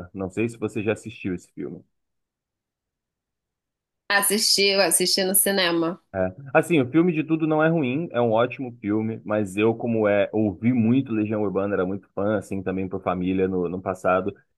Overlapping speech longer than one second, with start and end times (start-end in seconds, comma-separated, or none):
none